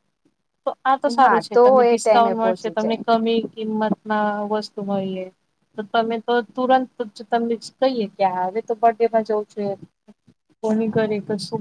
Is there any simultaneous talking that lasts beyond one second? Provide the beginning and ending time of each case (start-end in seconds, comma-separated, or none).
1.2-3.0